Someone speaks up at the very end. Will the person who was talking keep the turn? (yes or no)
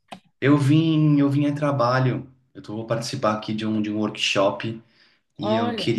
yes